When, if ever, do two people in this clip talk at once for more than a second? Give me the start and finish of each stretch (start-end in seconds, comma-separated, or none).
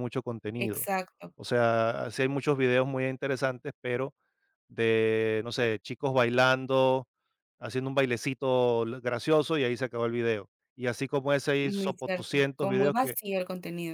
11.6-13.2